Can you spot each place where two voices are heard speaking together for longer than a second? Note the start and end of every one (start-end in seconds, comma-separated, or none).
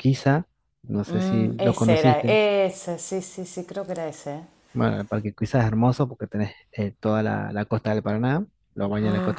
1.1-2.4